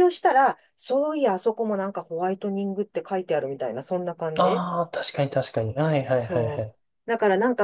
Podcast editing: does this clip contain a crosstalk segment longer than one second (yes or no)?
no